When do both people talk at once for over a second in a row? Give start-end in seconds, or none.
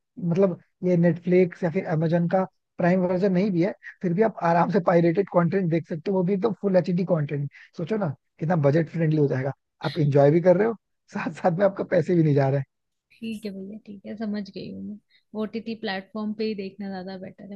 none